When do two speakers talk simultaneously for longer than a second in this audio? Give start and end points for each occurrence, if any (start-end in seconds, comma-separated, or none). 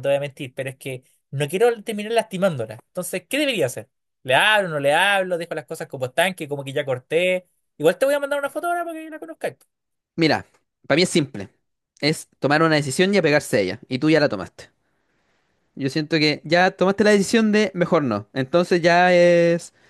none